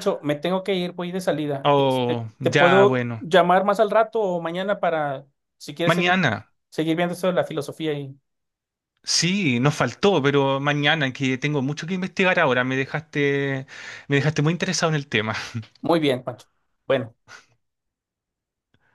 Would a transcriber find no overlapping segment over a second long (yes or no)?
no